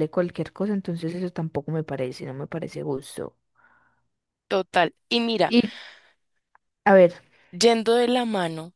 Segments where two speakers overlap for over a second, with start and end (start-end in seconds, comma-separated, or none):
none